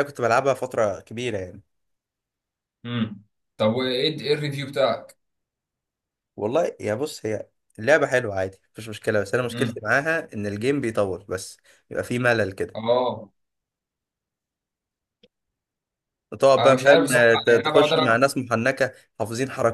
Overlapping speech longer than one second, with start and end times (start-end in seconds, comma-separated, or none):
16.6-18.2